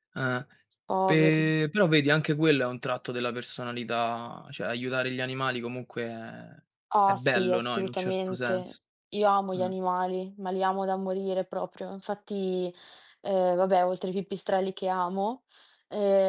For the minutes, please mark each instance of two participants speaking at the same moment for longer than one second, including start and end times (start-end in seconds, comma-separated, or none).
7.1-8.8